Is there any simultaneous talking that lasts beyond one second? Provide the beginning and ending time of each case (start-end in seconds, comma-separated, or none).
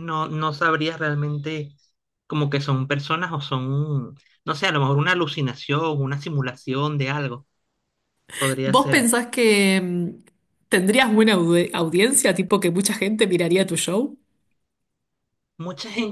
none